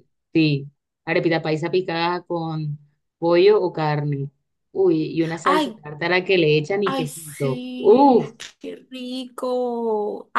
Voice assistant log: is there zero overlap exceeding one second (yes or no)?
no